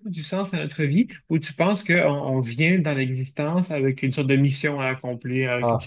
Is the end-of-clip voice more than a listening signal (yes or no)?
no